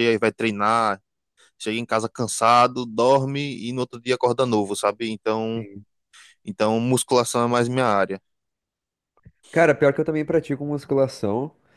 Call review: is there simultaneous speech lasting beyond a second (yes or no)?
no